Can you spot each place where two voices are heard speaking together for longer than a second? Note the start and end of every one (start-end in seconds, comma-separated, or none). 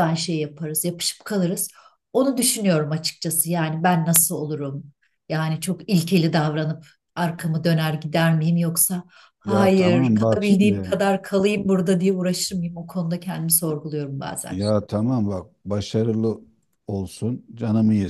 9.4-10.9